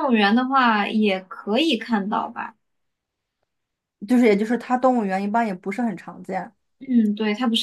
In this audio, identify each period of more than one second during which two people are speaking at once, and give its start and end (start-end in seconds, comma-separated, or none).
none